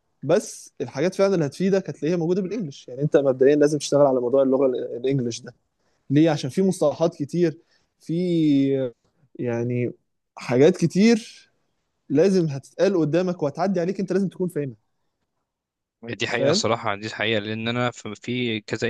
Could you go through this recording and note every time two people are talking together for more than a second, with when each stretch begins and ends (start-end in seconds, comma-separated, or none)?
none